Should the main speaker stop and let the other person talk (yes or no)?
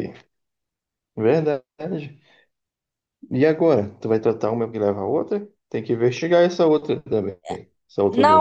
yes